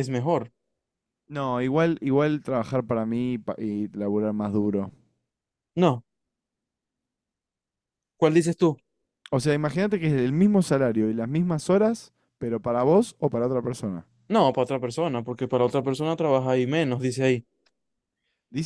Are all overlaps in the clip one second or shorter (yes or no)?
yes